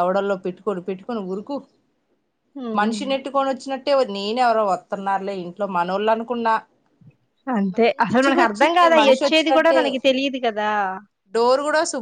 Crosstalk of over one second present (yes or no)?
yes